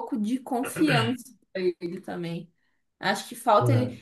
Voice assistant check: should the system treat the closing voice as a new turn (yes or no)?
no